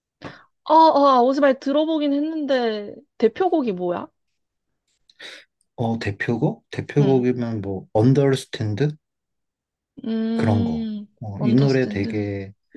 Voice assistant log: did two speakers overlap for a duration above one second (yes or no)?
yes